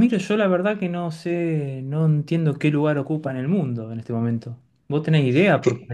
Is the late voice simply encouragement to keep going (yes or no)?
yes